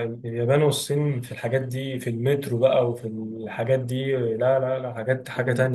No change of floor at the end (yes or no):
no